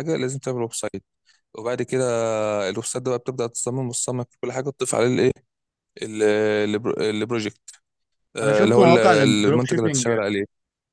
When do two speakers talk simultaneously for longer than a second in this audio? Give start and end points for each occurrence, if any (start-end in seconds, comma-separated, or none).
8.4-10.2